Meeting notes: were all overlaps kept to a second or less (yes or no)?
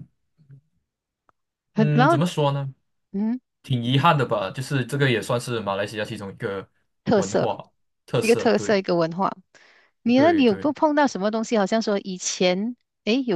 yes